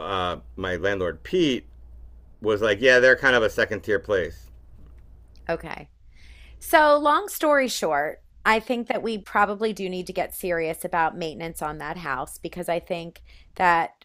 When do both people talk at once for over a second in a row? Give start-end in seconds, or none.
none